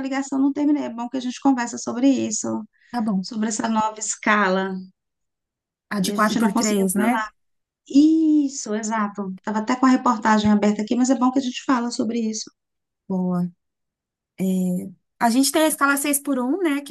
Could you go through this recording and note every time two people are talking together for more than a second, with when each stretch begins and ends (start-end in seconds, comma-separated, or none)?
6.0-7.2